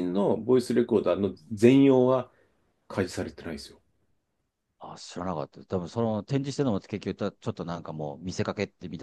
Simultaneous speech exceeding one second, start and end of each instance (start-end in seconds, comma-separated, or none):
none